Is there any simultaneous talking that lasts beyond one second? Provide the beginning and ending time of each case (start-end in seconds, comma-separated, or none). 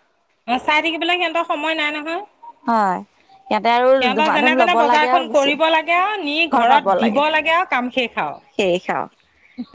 4.0-5.9